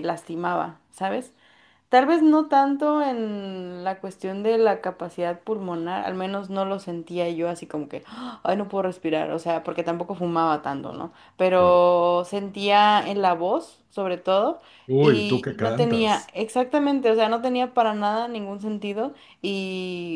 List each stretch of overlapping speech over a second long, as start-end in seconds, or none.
15.0-16.3